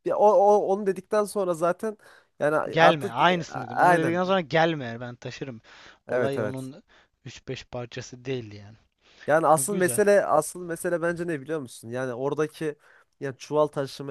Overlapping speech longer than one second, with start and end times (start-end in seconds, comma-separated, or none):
2.7-4.2